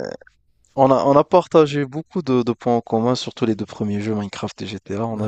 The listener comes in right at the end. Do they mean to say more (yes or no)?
yes